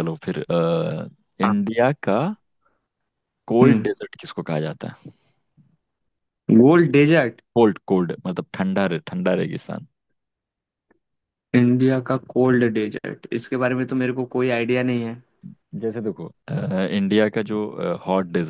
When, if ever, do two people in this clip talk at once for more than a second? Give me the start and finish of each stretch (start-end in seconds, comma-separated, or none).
none